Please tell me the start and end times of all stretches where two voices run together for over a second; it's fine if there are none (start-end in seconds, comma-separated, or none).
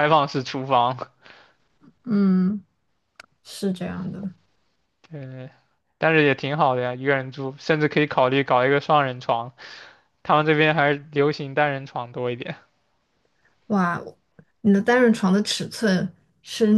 none